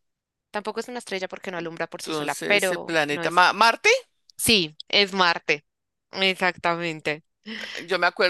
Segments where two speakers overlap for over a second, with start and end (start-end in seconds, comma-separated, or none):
2.0-3.4